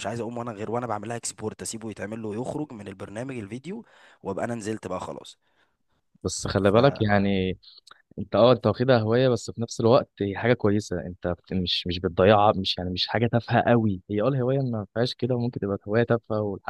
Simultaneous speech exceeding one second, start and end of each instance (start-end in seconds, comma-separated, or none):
none